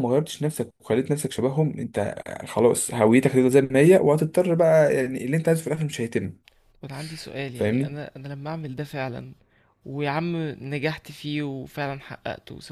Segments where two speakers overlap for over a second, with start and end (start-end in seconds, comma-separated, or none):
none